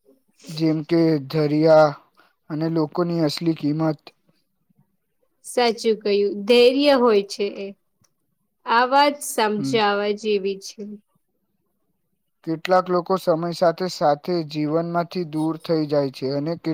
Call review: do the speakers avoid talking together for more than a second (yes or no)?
yes